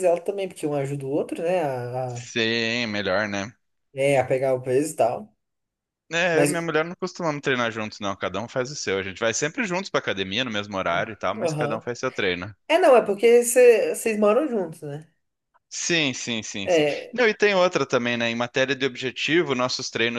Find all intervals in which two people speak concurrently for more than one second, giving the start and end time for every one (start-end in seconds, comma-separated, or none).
none